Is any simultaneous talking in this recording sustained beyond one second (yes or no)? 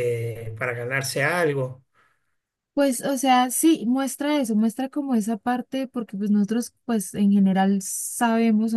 no